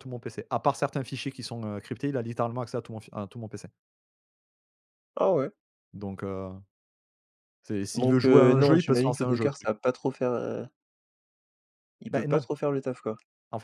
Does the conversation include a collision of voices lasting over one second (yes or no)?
yes